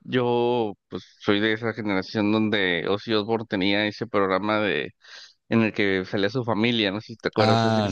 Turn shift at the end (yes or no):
yes